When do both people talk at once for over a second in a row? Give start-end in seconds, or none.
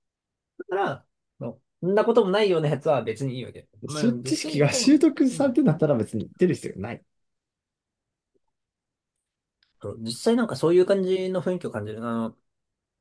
3.9-5.6